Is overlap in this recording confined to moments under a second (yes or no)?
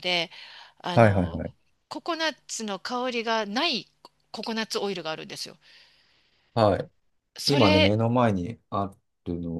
yes